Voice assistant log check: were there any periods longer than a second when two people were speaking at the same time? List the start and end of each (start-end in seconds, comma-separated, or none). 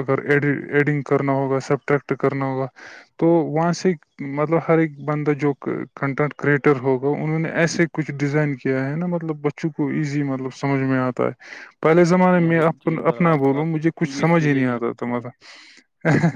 12.5-15.2